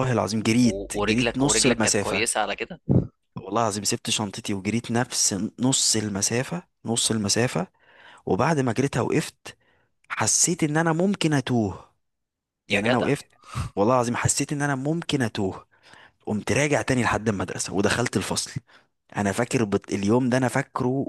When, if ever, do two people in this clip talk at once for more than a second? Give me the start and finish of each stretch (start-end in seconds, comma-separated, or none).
0.6-2.3